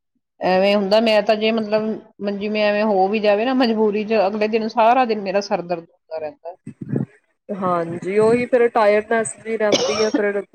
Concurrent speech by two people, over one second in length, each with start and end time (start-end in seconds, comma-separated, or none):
none